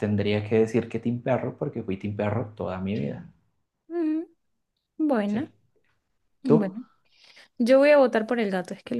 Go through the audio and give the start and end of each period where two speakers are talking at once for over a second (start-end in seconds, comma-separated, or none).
none